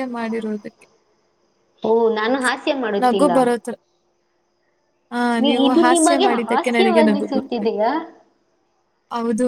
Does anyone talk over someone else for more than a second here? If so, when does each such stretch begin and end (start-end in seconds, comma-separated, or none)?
5.4-7.8